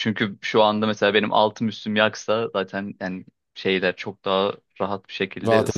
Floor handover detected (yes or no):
yes